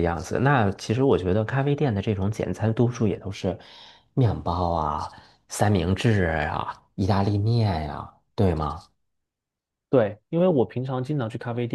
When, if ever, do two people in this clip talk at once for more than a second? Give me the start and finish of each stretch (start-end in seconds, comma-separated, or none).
none